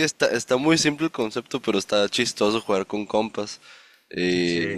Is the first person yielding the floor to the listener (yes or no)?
no